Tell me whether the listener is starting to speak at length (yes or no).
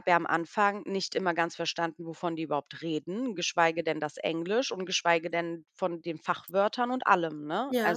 no